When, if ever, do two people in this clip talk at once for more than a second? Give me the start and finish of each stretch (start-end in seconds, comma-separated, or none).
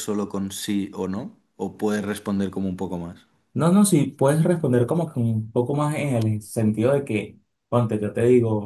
none